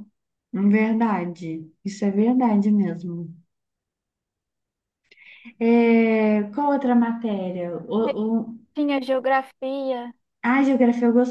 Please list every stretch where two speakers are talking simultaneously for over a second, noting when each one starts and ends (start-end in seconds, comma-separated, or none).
none